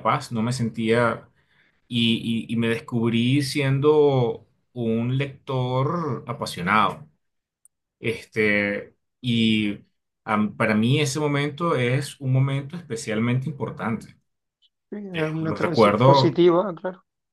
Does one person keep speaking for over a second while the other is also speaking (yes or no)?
yes